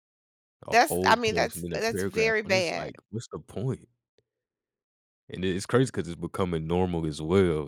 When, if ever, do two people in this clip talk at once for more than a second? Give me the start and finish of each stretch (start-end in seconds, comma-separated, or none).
0.7-2.9